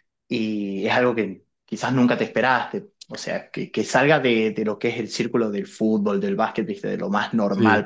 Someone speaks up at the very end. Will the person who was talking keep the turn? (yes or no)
yes